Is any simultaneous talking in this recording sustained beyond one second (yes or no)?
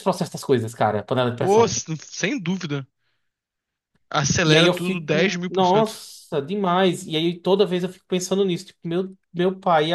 yes